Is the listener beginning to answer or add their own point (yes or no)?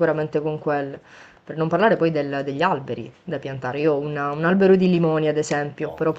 no